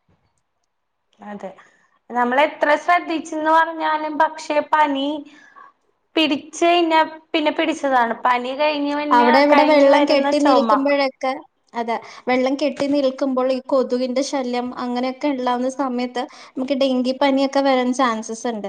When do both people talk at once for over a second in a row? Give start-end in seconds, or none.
none